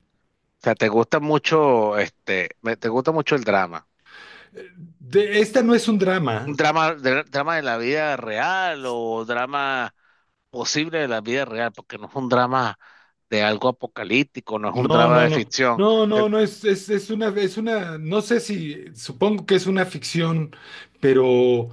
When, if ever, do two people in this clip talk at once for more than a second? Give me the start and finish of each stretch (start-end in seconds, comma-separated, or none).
14.7-16.3